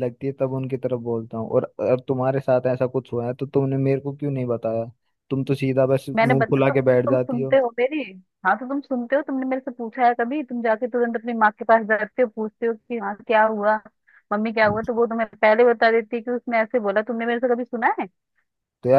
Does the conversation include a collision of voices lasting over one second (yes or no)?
yes